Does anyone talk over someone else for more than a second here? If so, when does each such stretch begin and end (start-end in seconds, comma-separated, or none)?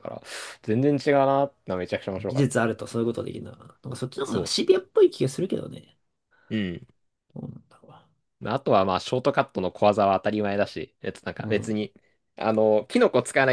none